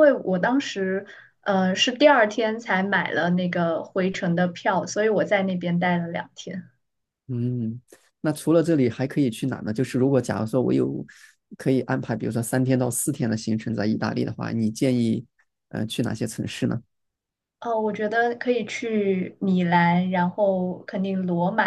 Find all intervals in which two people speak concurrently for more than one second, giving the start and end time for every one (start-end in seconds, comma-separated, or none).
none